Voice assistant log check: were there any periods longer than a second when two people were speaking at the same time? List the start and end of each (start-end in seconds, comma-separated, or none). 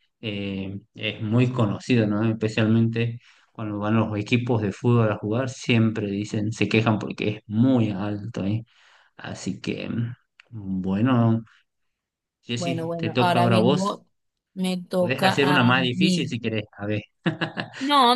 12.6-14.0, 15.0-16.4